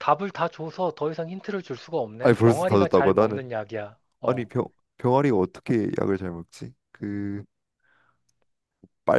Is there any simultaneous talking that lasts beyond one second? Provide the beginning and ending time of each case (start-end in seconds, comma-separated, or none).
2.2-3.4